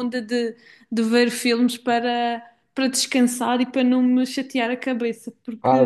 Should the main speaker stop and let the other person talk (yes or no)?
yes